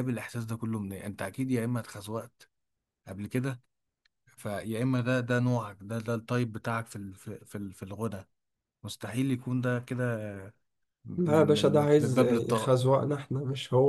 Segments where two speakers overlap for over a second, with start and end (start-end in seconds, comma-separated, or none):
11.2-12.8